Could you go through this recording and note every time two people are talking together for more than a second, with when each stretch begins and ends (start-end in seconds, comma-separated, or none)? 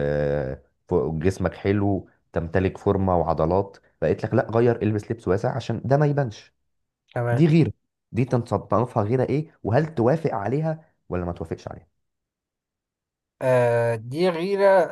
none